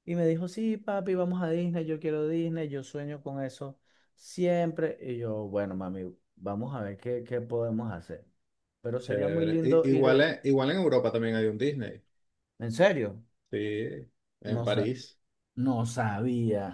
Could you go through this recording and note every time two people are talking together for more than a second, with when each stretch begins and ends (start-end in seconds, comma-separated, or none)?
9.0-10.3